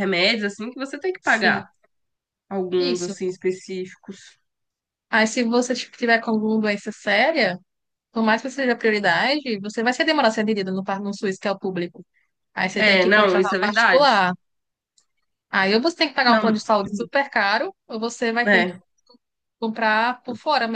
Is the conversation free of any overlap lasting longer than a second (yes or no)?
no